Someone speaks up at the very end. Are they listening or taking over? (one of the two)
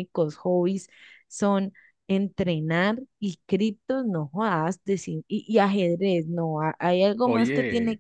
listening